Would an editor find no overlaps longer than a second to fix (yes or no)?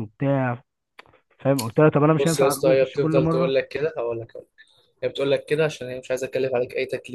no